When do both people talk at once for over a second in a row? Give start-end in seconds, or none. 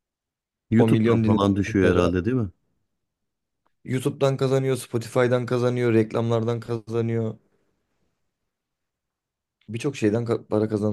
0.8-2.1